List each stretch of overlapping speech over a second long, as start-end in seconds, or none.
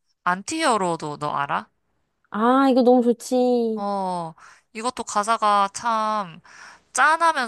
none